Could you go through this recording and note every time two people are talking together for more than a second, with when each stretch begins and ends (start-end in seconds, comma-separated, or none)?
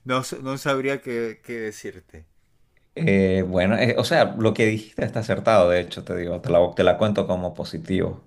none